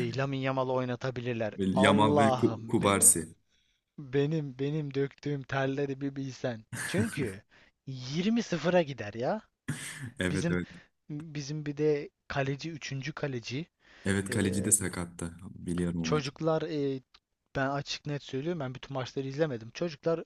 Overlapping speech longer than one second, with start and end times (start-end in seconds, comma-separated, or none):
1.6-3.1